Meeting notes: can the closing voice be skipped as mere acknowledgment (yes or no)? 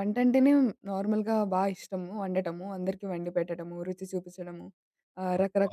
yes